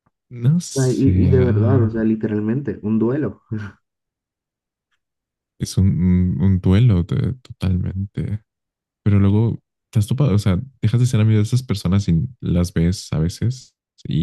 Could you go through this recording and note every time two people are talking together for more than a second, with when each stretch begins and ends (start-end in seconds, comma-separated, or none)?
0.8-2.1